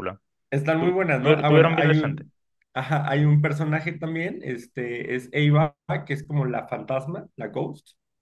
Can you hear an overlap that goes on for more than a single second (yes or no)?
yes